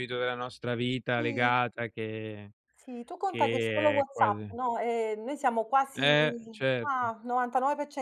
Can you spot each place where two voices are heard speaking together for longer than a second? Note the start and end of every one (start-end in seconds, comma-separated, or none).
3.2-4.6